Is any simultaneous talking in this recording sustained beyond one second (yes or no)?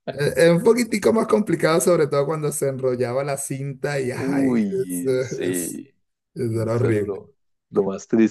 yes